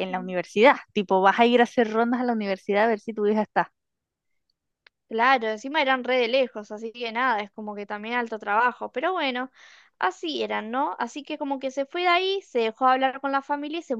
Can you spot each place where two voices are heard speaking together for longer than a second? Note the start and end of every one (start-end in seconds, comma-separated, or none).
none